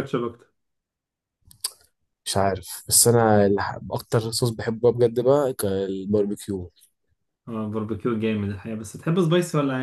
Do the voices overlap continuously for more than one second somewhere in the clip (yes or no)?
no